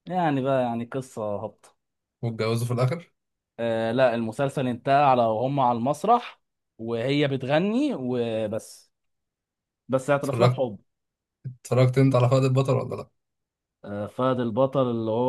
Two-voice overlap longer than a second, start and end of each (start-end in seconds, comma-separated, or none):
none